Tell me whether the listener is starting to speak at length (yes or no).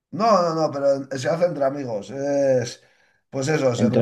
no